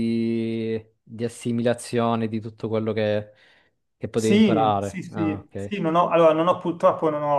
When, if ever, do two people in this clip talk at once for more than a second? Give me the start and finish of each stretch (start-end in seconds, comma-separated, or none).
4.2-5.8